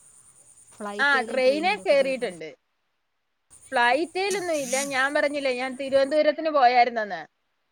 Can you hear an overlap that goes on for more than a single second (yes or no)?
yes